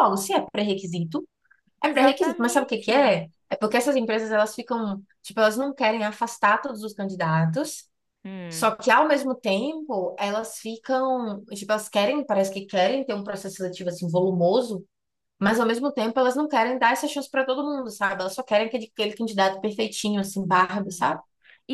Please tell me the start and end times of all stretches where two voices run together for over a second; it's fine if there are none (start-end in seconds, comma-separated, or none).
1.8-3.1